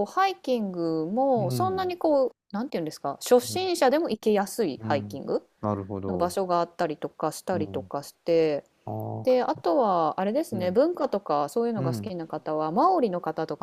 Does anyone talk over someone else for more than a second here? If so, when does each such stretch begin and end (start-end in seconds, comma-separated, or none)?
none